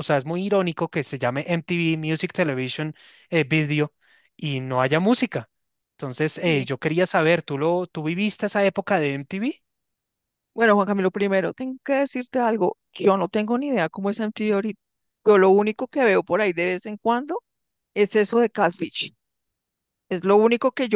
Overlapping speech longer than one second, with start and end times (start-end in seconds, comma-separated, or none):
none